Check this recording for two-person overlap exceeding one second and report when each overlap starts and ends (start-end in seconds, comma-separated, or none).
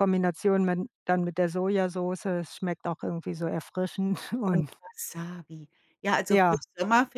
none